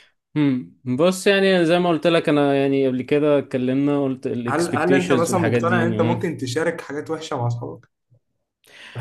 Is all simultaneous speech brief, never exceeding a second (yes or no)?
no